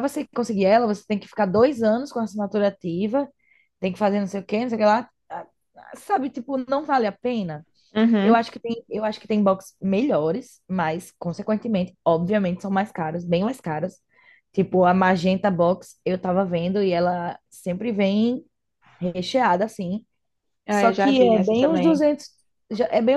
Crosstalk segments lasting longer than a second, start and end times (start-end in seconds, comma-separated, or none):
20.7-22.0